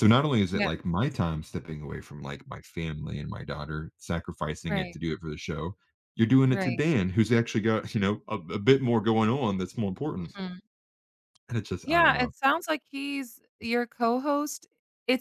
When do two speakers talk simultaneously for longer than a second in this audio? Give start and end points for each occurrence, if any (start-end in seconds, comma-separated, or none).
none